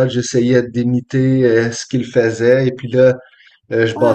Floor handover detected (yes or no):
no